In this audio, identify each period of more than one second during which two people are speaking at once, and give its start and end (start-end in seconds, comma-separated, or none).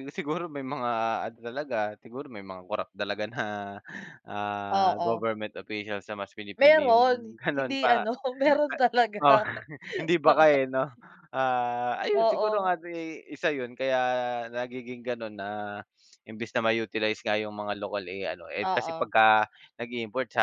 6.6-8.1